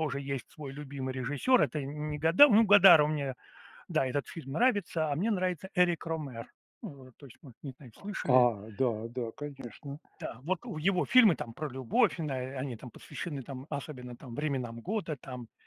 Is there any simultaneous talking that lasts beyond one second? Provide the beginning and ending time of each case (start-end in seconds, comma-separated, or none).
none